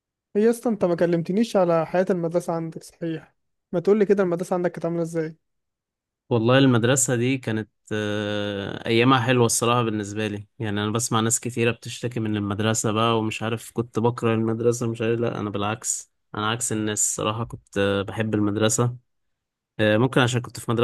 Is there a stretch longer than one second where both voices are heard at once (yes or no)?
no